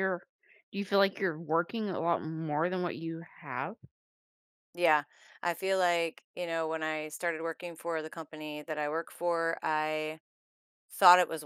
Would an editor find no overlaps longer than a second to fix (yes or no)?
yes